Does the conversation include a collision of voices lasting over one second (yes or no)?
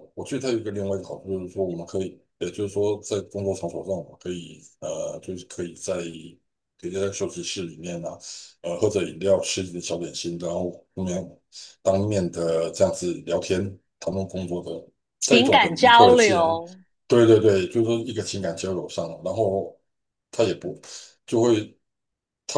yes